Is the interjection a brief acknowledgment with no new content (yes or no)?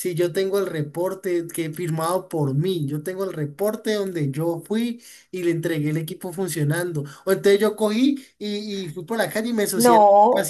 yes